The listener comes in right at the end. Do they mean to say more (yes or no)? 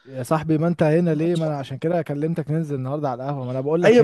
yes